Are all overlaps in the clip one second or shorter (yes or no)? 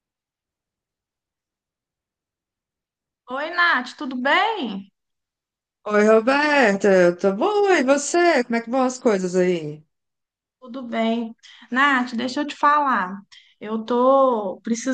yes